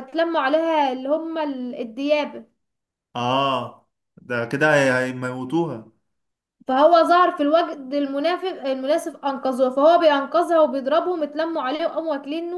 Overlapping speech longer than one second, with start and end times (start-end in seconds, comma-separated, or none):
none